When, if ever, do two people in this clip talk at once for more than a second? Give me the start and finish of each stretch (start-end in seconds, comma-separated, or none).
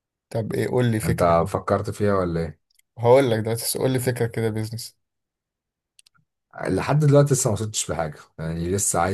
none